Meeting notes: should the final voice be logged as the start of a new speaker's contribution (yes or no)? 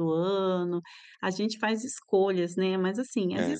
no